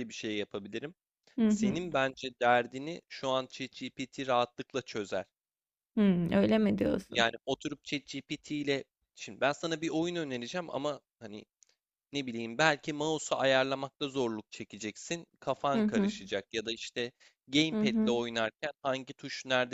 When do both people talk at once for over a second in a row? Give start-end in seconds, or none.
none